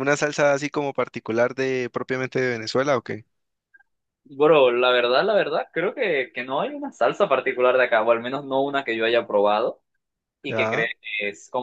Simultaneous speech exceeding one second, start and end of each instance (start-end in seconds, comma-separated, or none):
none